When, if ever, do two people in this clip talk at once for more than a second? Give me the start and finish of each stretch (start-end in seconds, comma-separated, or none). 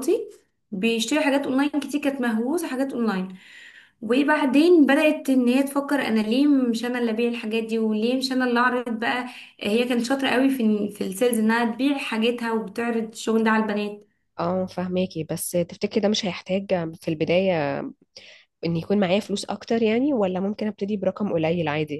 none